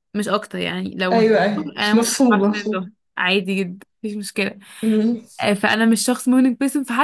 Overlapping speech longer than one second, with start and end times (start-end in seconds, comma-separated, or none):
1.1-2.9